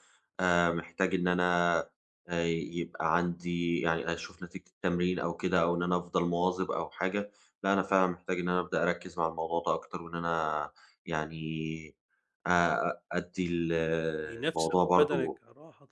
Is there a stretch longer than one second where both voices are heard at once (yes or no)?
yes